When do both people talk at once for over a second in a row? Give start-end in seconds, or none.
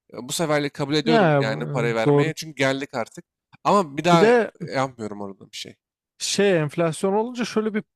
1.0-2.3